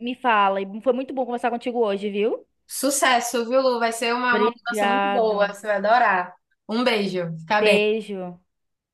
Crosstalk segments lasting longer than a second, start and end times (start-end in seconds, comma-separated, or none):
4.3-5.6